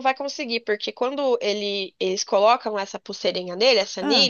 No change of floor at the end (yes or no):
yes